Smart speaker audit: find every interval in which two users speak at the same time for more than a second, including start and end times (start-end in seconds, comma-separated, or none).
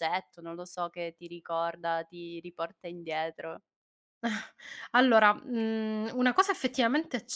none